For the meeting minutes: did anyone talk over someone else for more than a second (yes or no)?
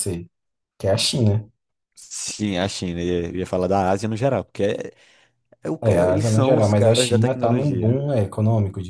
yes